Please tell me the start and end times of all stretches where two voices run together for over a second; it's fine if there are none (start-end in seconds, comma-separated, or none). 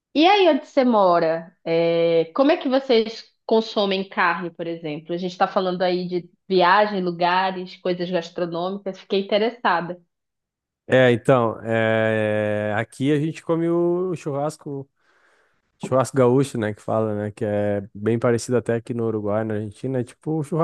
none